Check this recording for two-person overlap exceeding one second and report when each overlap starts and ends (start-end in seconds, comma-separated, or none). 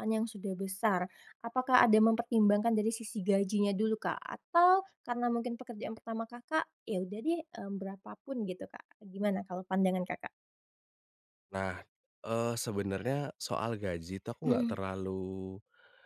none